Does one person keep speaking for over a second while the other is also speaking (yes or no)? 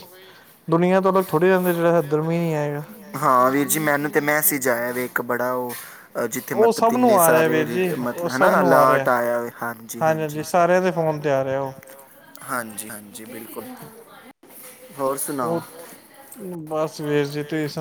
yes